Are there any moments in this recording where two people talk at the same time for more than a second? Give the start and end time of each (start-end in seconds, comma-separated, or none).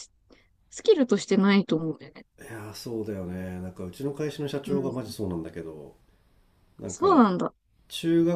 none